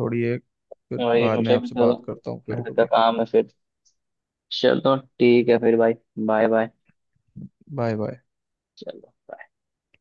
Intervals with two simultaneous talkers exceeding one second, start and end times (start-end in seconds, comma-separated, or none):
1.0-2.9